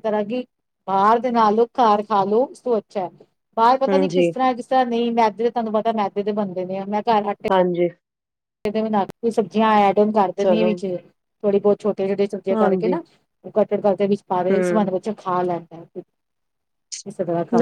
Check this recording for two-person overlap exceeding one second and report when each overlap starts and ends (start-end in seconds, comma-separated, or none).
none